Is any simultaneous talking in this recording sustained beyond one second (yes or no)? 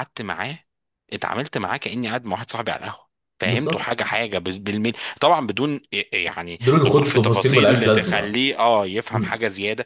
yes